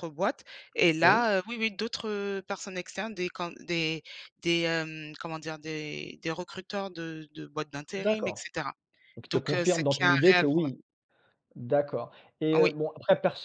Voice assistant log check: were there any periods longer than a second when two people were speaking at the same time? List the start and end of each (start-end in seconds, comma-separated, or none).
9.3-10.7